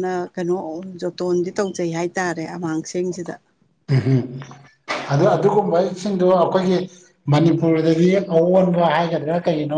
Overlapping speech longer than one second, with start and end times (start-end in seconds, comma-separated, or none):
none